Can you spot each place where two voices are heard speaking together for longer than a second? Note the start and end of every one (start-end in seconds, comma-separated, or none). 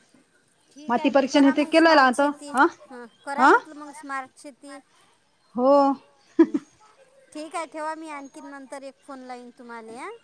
0.9-2.2